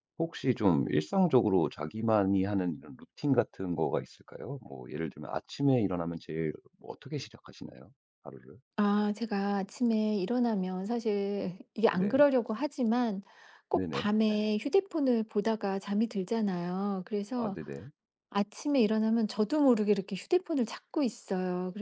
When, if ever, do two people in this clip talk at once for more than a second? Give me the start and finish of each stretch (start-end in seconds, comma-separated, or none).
none